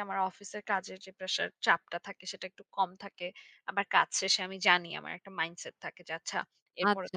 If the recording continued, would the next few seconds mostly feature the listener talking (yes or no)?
yes